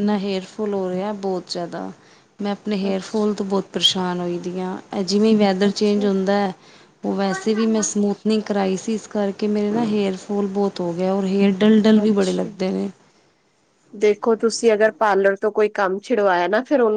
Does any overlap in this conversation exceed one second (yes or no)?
no